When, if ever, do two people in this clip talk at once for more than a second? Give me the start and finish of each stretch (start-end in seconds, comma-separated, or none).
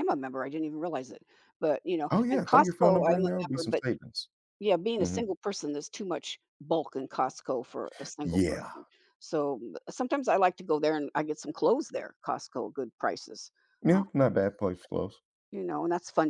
2.1-3.8